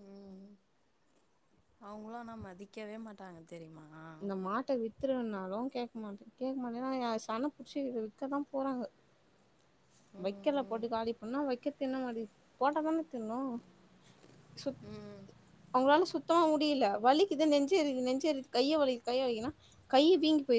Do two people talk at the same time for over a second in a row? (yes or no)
no